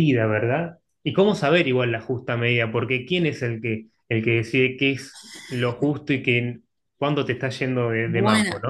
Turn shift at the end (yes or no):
yes